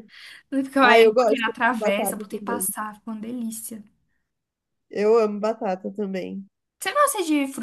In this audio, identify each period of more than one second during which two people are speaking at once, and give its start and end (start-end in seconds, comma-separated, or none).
0.8-2.7